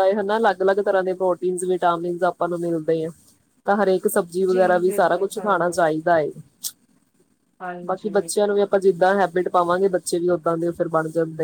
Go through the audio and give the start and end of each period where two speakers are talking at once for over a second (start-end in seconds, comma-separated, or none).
4.5-5.8